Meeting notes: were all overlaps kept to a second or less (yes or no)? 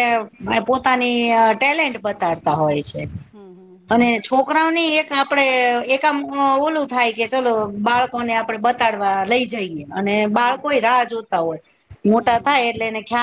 yes